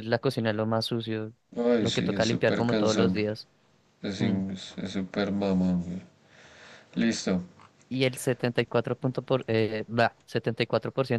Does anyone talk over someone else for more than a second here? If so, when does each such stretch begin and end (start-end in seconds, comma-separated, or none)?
1.8-3.2